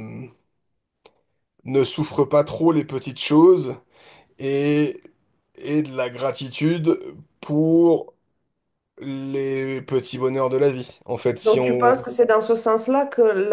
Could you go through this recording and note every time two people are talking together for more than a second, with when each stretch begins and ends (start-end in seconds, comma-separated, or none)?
none